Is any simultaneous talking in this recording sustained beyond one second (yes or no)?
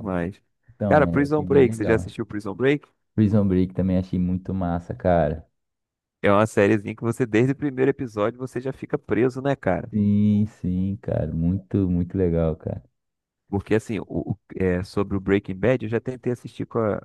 yes